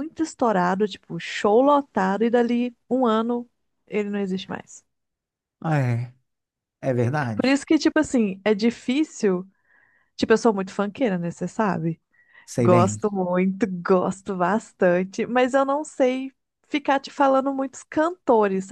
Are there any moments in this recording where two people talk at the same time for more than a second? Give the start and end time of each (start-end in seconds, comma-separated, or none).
none